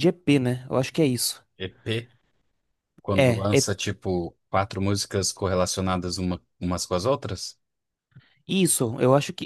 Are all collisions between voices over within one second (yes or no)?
yes